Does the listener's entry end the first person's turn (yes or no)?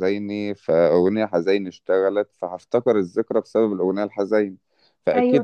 no